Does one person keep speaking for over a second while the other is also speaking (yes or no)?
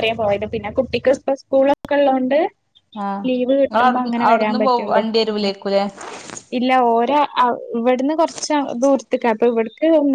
yes